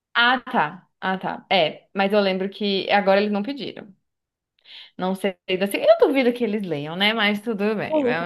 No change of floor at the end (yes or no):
no